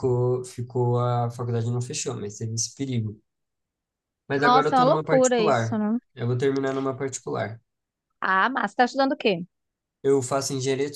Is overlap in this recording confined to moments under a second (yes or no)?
no